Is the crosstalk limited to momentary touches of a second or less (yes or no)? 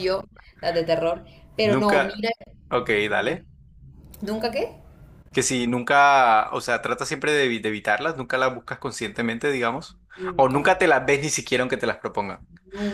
yes